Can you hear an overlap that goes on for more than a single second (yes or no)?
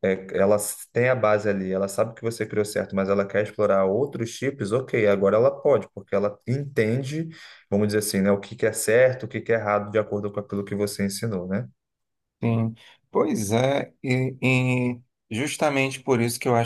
no